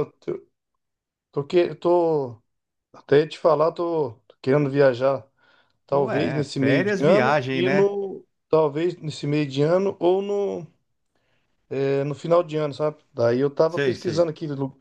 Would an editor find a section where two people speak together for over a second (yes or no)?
yes